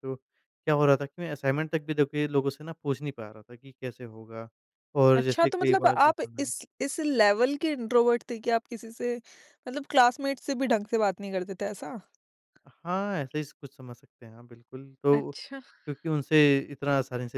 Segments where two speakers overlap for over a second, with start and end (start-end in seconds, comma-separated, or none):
5.1-6.5